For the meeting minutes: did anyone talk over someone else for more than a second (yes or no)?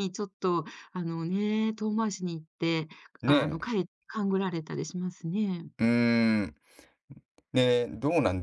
no